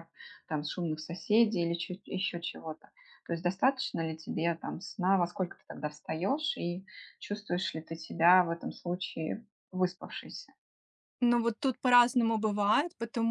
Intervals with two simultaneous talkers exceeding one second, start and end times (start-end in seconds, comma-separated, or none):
none